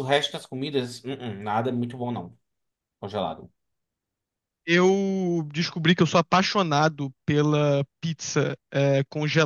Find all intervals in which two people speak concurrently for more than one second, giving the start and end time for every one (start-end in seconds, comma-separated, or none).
none